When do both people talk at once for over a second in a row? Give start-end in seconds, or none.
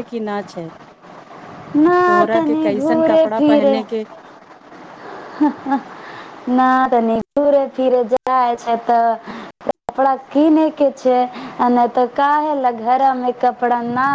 2.0-3.8